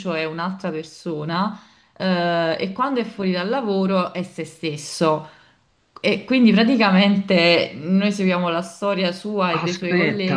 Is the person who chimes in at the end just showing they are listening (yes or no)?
no